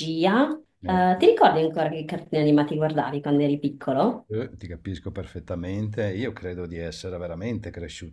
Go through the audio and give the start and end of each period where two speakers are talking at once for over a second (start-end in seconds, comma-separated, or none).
none